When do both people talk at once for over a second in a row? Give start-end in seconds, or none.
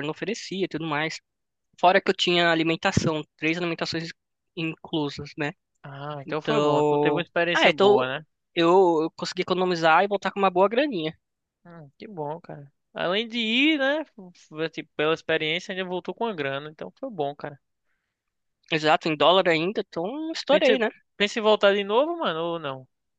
6.2-8.0